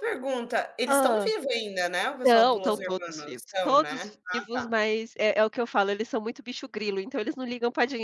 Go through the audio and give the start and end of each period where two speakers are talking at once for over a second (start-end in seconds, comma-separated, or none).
2.2-4.8